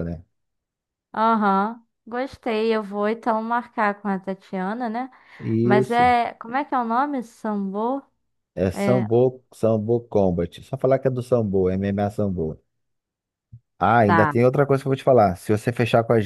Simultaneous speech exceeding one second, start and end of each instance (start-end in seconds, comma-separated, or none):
none